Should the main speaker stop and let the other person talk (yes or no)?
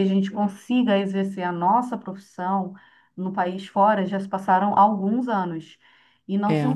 no